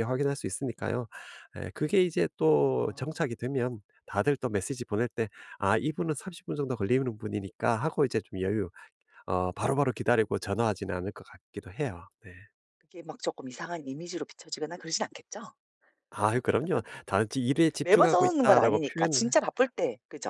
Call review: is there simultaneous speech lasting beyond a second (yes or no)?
yes